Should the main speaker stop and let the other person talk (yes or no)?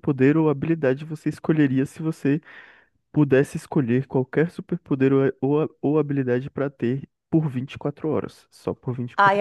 yes